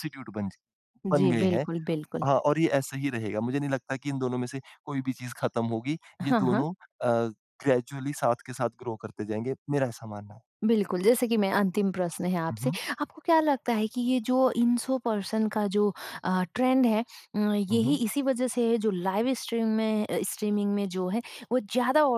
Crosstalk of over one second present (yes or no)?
no